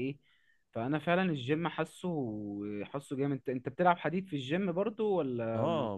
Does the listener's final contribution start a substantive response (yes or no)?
yes